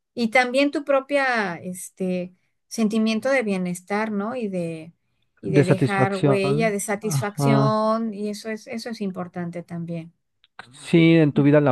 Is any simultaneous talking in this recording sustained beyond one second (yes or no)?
yes